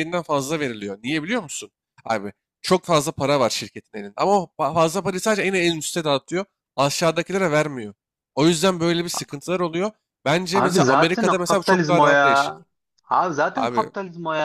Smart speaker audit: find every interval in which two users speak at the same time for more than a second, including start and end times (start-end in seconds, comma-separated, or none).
10.5-12.6